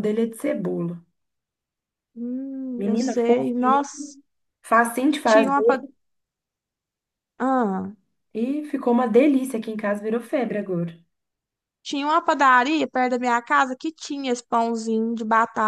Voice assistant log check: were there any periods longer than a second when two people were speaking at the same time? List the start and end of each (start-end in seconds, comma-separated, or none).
2.8-4.1